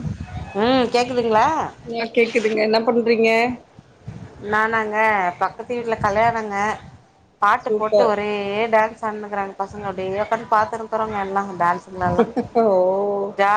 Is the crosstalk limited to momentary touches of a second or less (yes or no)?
yes